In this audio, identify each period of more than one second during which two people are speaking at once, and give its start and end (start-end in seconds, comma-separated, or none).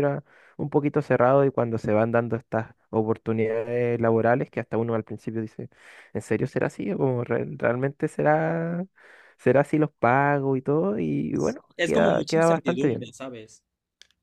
11.8-13.1